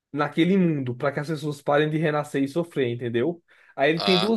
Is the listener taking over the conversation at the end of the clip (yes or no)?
no